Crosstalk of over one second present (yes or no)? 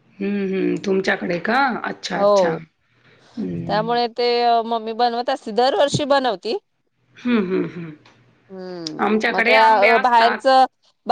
yes